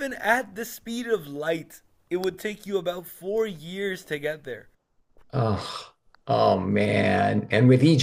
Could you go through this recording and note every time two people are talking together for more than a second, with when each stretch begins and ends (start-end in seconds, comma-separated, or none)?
none